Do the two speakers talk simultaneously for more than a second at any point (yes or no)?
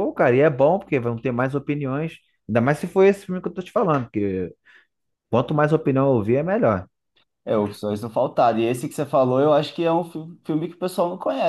no